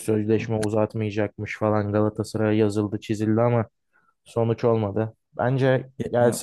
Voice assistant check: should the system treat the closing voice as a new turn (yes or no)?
no